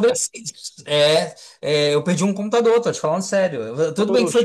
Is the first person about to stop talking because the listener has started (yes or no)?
no